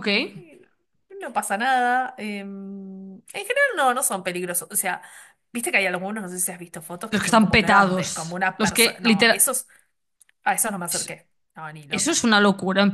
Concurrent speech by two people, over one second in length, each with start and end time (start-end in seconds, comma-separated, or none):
7.1-9.5